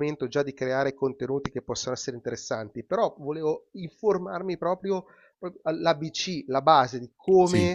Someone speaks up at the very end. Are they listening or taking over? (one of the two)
listening